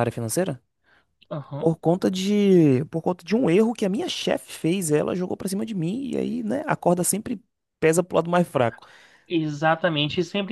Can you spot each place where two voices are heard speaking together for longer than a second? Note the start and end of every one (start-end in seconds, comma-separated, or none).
none